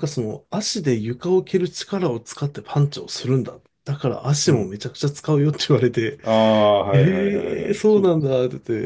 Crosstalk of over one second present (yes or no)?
yes